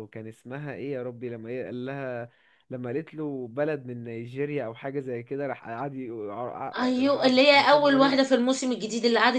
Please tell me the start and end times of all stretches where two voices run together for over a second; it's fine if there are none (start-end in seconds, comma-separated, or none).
6.8-8.2